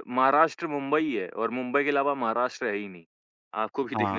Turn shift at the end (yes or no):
yes